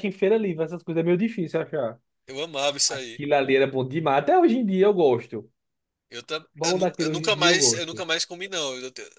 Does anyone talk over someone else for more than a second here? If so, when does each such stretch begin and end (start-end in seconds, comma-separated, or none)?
6.6-8.0